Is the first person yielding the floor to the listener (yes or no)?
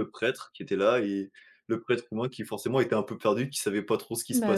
no